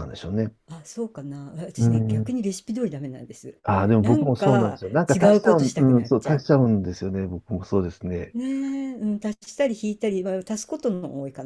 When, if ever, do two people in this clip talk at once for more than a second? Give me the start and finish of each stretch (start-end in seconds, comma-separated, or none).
4.0-6.4